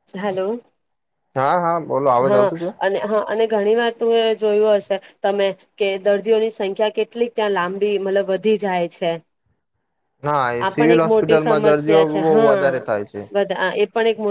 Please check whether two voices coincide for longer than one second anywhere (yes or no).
yes